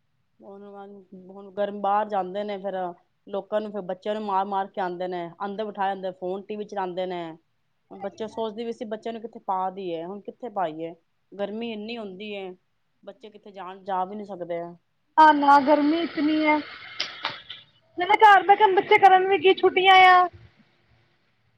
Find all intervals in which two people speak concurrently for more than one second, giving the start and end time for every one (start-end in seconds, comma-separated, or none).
none